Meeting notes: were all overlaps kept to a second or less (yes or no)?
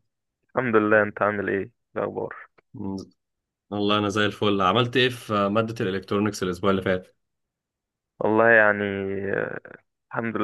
yes